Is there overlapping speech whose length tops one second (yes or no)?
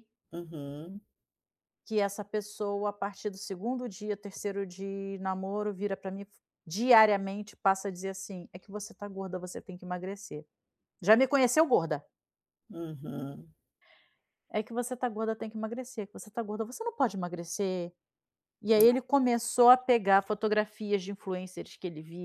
no